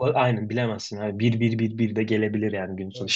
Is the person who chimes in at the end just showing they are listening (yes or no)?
yes